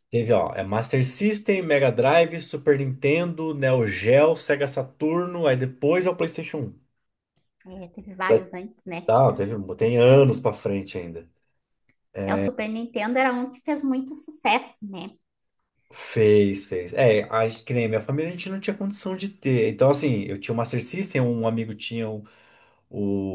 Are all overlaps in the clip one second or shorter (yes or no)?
yes